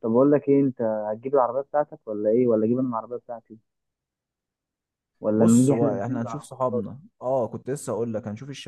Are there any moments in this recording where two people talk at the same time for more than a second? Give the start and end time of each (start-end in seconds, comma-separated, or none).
5.3-6.6